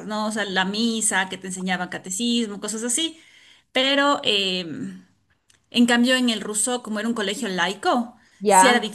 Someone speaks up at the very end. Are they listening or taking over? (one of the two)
listening